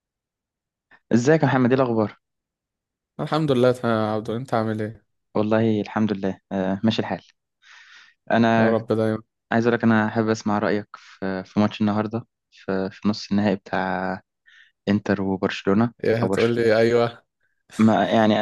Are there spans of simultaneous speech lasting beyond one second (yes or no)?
no